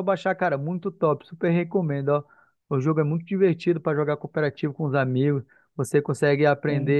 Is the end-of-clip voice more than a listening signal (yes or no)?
no